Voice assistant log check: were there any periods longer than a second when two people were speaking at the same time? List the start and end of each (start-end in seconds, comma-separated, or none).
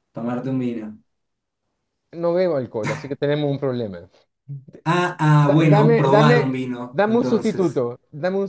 5.5-7.8